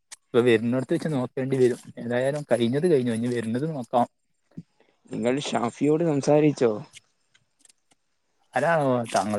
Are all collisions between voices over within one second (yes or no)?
yes